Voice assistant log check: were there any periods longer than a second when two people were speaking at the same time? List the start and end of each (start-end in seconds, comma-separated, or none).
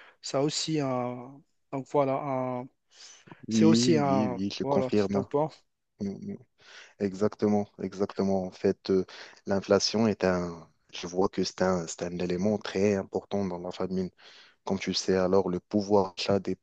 3.5-5.3